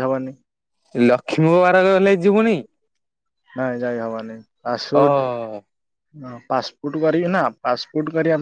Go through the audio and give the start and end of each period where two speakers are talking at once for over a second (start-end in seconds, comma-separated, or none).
none